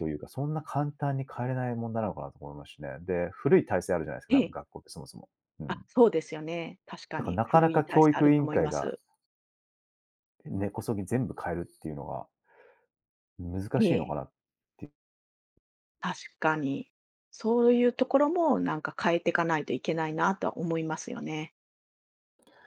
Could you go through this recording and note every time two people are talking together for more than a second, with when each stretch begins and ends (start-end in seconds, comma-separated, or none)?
7.2-8.9